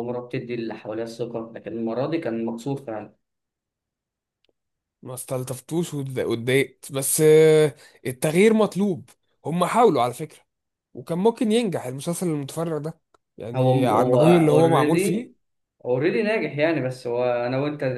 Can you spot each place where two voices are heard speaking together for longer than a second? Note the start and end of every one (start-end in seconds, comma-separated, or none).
13.5-15.3